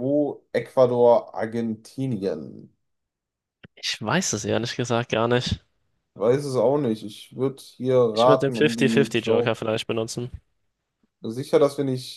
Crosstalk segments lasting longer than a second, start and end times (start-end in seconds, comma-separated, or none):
8.1-9.7